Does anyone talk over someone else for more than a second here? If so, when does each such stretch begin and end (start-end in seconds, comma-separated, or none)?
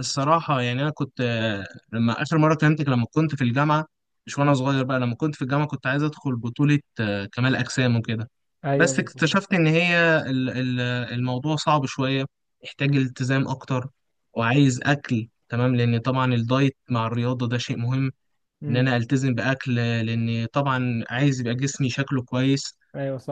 none